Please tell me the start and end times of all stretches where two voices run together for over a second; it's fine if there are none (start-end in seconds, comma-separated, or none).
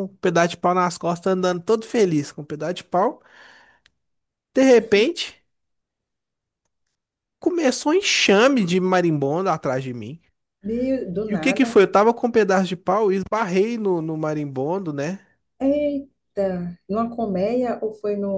none